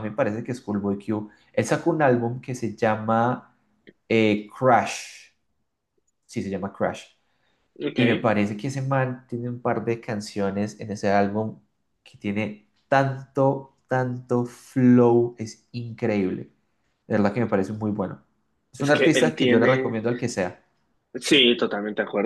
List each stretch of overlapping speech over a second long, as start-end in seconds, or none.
18.8-20.0